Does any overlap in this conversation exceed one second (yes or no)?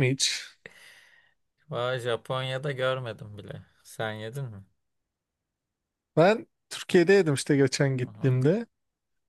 no